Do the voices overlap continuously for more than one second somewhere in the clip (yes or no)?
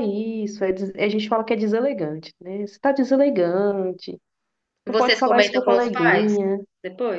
yes